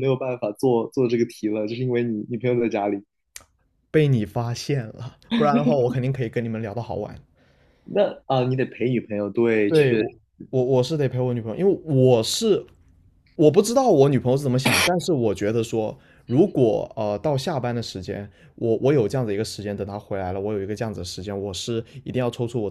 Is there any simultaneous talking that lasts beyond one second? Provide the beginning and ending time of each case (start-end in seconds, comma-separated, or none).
none